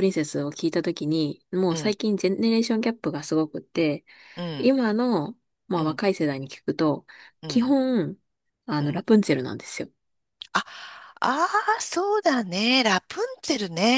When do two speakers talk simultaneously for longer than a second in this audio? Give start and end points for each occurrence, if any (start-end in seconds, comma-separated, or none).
none